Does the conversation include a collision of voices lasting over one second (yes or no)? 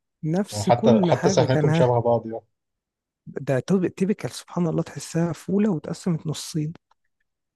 yes